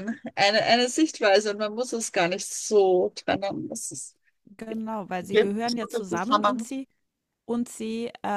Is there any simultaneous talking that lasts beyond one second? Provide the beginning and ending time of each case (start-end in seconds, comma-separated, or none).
5.3-6.7